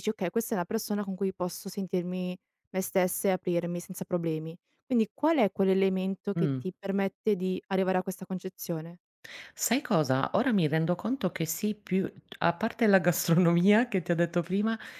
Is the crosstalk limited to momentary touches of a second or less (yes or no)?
yes